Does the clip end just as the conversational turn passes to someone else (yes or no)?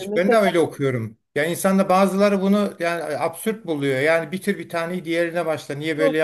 yes